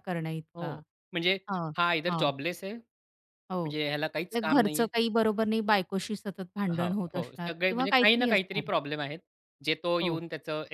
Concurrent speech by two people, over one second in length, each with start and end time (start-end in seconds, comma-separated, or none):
6.8-8.7